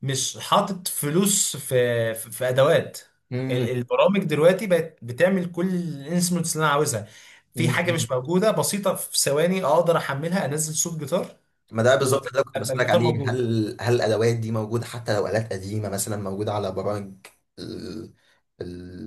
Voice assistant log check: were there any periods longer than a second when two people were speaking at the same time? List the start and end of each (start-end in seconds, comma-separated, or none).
12.0-13.5